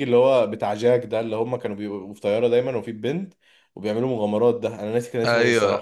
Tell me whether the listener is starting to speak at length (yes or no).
yes